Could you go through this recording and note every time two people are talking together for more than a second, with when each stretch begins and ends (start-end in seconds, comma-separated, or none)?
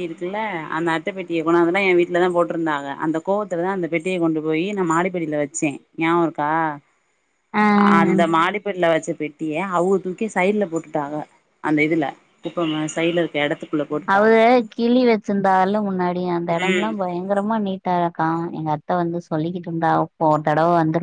none